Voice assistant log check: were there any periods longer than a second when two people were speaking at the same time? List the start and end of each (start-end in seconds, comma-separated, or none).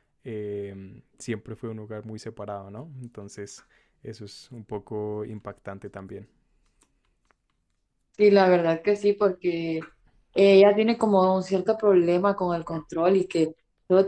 none